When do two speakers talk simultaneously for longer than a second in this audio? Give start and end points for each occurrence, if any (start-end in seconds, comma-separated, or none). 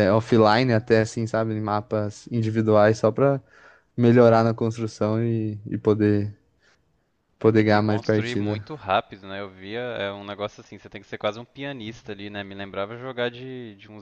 7.4-8.6